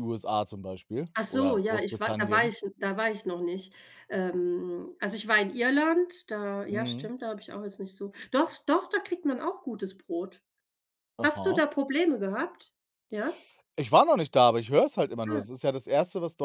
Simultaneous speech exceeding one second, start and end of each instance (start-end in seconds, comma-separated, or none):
1.1-2.5